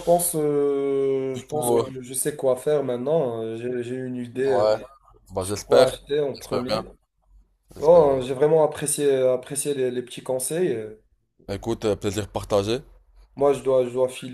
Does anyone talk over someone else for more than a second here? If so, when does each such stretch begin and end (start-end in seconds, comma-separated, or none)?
5.4-6.8